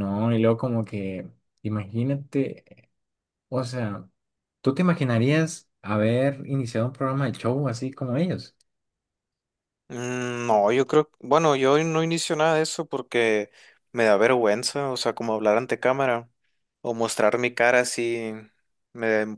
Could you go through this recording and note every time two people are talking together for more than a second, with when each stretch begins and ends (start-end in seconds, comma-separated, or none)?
none